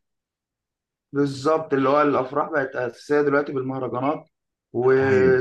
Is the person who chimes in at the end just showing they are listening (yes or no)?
yes